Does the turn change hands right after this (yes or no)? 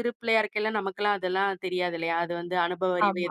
no